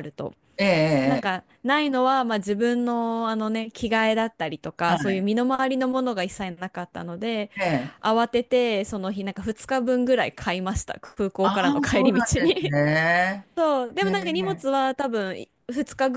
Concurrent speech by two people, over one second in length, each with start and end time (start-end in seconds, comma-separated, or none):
11.4-12.7